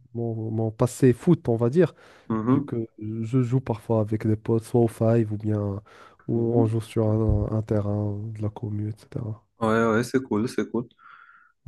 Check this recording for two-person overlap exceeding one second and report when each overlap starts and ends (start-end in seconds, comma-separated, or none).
none